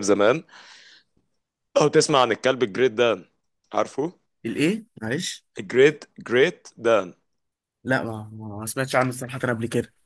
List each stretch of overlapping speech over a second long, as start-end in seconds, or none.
none